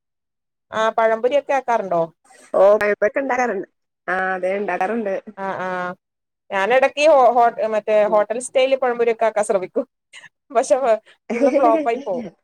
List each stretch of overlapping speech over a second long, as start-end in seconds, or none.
none